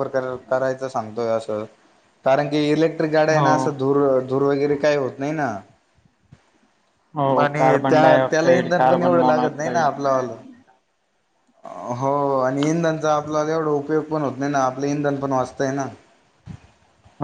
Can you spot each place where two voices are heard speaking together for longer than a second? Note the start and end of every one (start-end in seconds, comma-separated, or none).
7.4-9.9